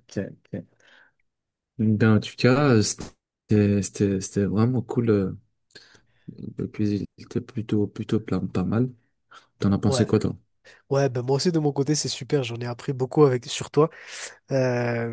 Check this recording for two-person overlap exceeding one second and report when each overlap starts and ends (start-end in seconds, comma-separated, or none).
none